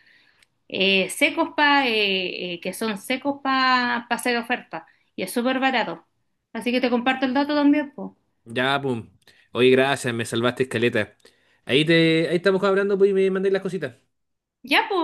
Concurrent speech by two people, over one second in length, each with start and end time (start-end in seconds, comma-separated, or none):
none